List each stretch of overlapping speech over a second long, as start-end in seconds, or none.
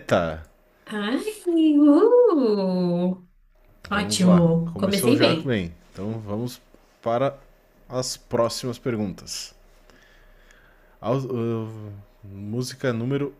3.9-5.6